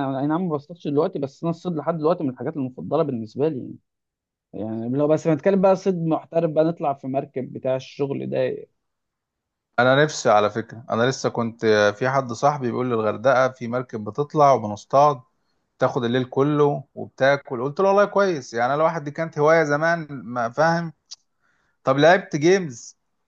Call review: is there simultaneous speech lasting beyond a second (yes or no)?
no